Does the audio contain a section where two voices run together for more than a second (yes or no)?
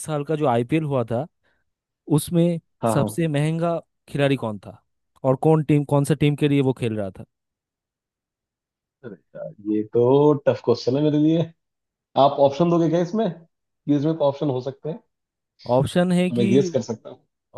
no